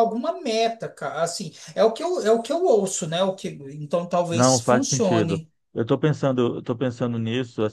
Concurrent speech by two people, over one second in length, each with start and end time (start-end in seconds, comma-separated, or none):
4.3-5.5